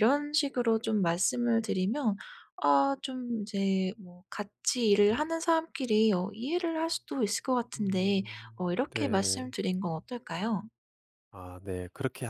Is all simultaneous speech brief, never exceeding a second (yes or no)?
no